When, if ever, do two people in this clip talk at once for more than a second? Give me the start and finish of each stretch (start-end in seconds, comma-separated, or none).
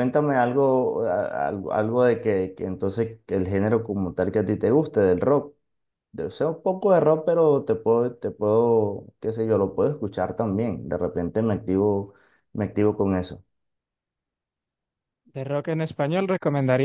none